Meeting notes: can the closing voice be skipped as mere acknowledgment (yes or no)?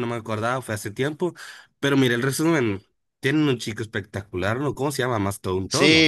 no